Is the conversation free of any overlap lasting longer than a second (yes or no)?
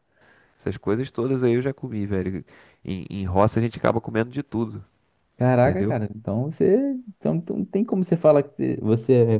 yes